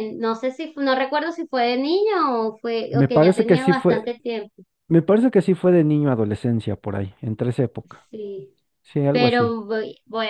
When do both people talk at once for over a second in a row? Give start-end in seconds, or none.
2.9-4.1